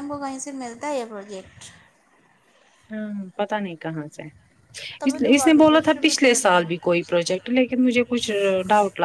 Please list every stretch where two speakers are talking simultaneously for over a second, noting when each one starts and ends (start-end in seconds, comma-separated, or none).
5.1-6.7